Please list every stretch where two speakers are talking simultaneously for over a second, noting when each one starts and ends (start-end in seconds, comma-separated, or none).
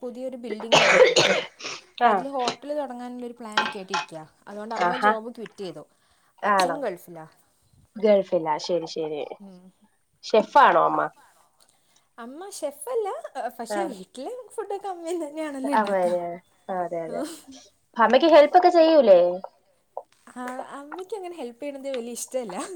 none